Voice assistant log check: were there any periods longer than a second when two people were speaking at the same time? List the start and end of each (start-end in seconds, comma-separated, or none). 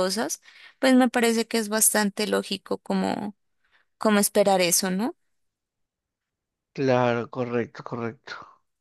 none